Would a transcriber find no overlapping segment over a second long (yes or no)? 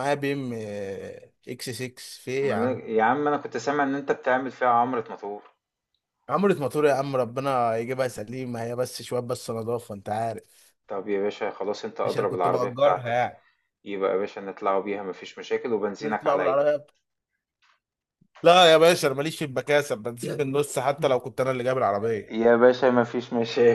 no